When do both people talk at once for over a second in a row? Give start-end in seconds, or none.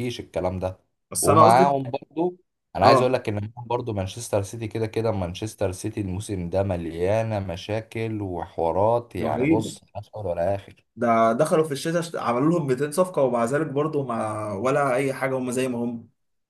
none